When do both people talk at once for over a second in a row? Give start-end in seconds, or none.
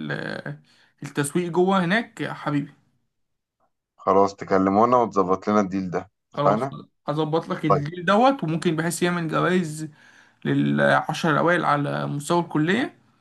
none